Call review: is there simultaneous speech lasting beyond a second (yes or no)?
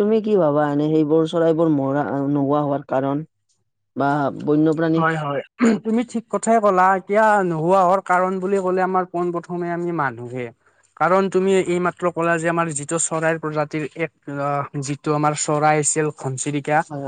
no